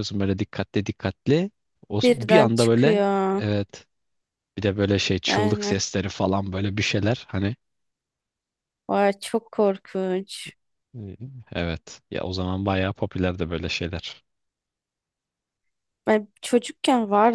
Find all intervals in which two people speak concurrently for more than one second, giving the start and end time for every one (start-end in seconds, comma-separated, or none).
2.0-3.4